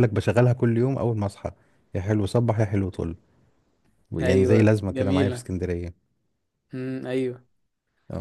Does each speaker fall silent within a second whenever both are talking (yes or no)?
no